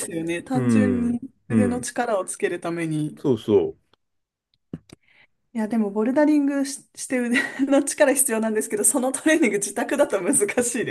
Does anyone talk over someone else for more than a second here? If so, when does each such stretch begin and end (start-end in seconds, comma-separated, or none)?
0.5-1.9